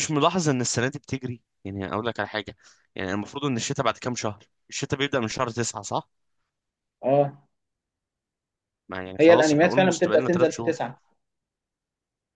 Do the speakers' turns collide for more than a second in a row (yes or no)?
yes